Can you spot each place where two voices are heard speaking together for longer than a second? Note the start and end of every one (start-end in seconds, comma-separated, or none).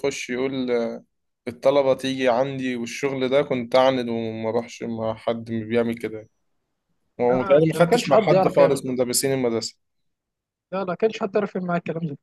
7.3-9.0